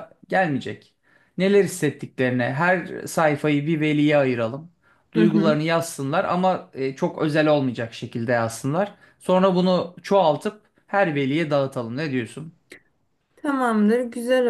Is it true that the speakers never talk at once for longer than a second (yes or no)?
yes